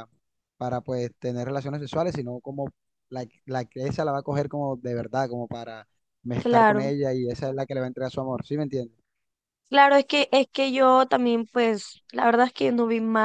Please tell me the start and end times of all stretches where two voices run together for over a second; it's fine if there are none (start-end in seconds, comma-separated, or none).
none